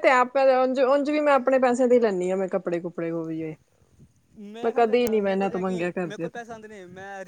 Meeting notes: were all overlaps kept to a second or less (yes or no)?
no